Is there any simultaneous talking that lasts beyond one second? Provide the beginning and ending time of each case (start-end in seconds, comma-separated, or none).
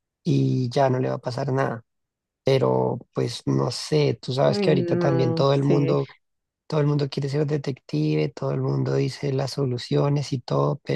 4.4-5.9